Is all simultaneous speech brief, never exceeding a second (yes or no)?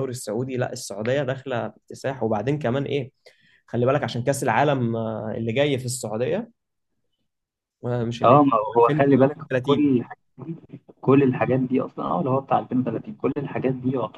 no